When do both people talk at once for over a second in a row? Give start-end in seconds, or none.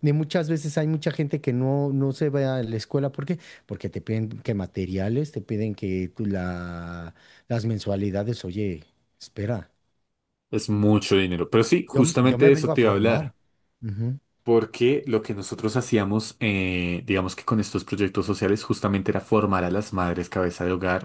11.9-13.3